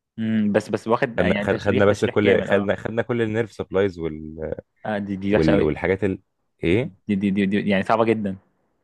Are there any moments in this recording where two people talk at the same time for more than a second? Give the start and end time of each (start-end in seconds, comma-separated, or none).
1.2-2.8